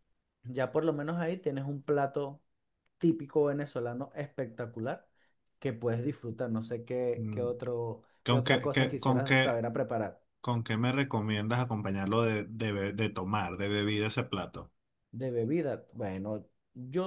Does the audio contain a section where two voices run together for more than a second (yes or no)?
yes